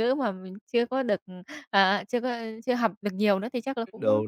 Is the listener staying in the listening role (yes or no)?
yes